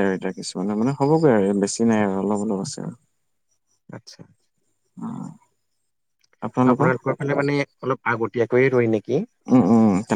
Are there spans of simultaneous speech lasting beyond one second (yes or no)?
no